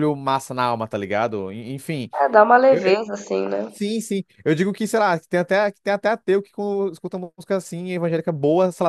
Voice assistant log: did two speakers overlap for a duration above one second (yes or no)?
no